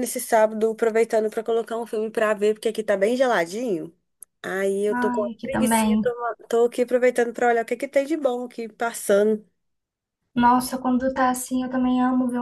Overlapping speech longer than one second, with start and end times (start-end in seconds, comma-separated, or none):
4.9-6.1